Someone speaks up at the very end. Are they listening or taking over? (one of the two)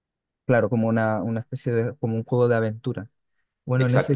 listening